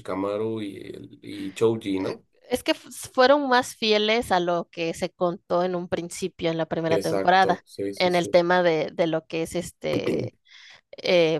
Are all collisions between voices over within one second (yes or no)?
no